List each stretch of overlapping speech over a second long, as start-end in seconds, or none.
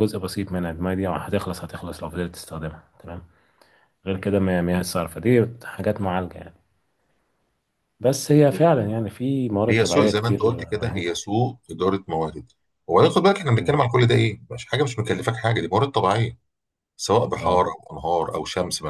9.7-11.2